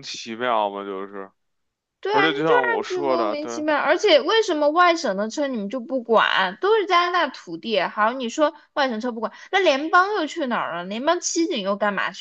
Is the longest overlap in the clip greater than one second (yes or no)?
yes